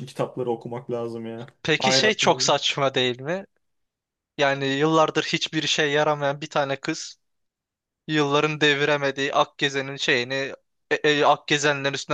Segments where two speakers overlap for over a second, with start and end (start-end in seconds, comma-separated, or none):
none